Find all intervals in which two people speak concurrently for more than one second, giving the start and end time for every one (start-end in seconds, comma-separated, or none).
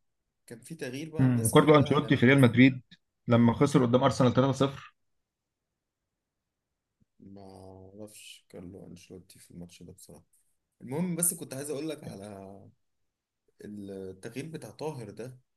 1.2-2.4